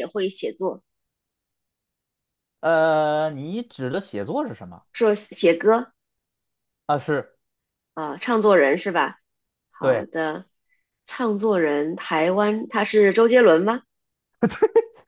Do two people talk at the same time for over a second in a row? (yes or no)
no